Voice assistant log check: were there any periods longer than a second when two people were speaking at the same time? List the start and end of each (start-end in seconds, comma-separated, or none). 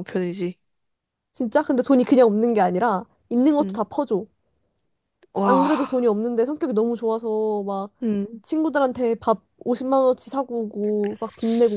none